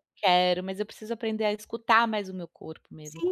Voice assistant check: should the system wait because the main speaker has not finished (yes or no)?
no